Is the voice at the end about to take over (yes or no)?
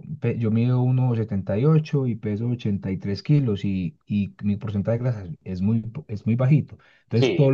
yes